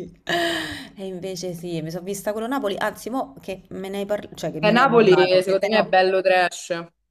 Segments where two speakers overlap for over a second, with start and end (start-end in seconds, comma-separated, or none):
4.6-6.0